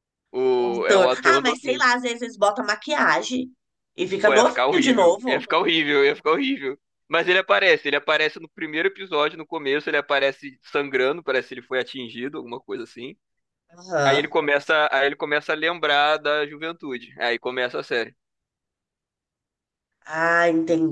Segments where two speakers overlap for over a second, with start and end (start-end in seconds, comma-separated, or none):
0.6-1.8, 4.2-5.4